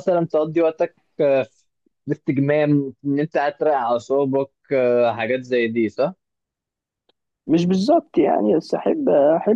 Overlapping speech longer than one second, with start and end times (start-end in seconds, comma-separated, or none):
none